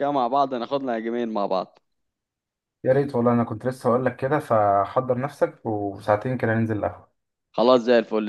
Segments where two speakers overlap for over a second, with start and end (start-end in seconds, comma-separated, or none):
none